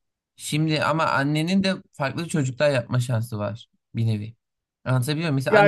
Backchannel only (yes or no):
yes